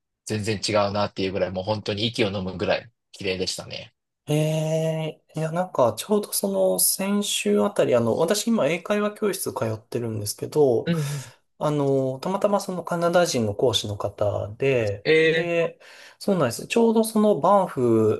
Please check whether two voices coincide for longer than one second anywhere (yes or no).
no